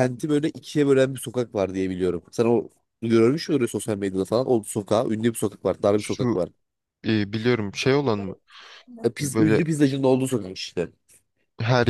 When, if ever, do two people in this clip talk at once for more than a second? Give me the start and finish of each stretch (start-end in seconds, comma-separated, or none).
none